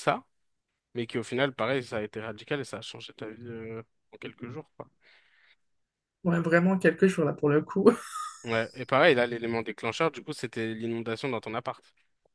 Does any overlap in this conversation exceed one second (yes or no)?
no